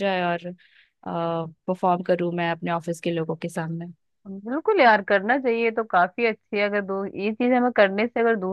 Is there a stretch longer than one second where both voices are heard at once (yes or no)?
no